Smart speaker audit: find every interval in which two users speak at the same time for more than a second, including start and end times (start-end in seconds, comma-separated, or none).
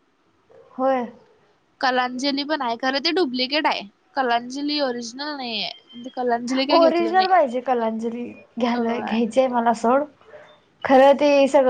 none